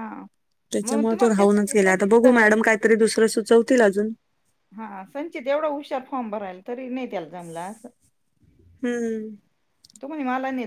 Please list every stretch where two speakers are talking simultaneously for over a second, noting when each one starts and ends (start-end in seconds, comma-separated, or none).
0.8-2.5